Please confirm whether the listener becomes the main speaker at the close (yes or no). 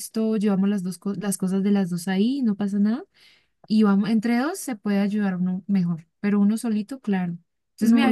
yes